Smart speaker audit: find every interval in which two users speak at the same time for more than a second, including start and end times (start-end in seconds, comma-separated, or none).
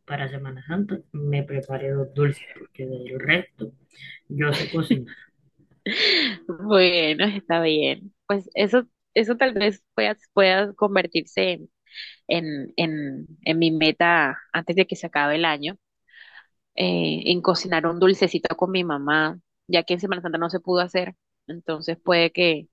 none